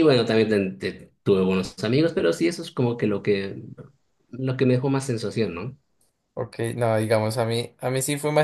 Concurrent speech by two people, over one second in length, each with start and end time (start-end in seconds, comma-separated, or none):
none